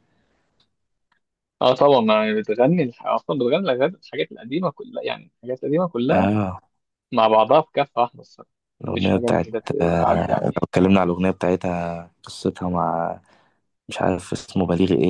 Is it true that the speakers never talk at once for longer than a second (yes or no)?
no